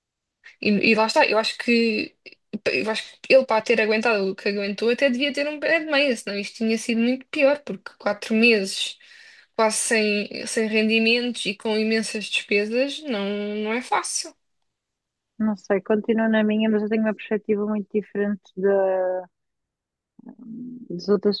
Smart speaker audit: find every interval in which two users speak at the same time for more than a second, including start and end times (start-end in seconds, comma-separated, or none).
none